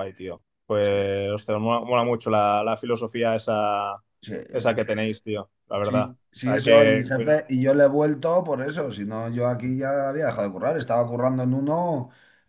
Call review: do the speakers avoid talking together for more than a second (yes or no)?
no